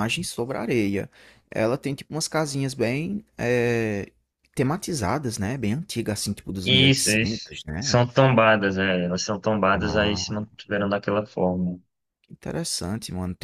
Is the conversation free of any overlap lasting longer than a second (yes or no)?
no